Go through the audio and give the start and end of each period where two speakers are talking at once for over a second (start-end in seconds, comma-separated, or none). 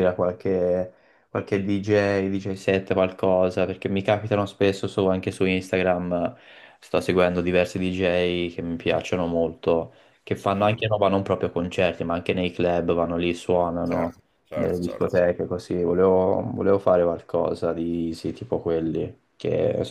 13.8-15.3